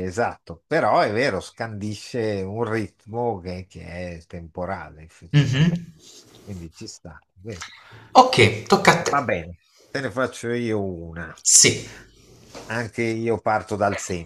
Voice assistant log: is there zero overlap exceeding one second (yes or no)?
yes